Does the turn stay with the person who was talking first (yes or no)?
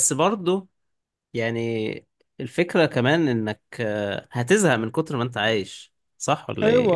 no